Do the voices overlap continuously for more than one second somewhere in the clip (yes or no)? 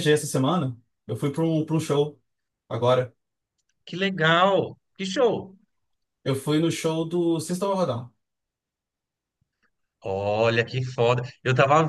no